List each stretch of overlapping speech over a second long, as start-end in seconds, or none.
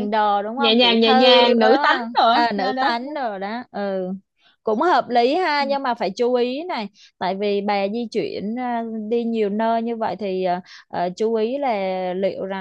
0.6-2.9